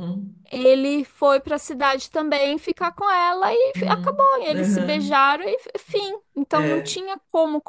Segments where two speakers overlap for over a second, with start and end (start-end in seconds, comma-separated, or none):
3.7-5.2